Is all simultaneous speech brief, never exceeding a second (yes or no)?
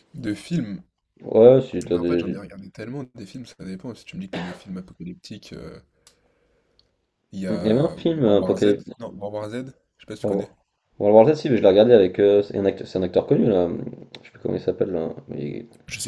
no